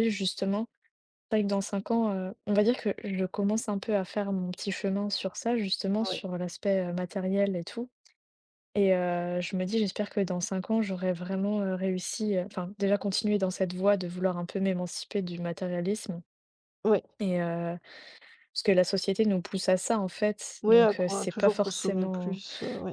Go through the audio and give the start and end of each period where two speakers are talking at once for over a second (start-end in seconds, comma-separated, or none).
20.6-22.4